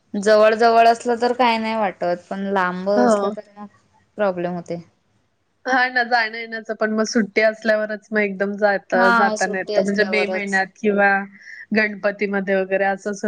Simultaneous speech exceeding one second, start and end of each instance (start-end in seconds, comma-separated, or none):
9.0-10.6